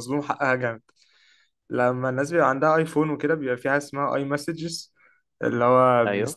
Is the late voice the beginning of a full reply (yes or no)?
no